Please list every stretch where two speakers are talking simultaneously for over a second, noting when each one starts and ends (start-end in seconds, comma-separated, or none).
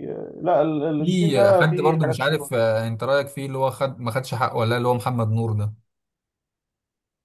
1.0-2.5